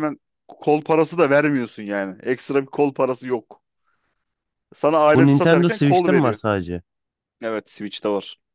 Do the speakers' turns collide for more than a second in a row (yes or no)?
yes